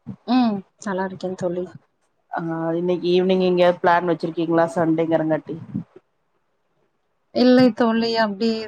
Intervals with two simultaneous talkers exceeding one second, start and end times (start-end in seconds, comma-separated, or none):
none